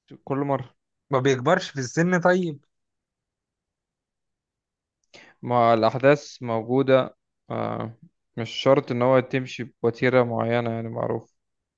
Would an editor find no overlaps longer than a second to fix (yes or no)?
yes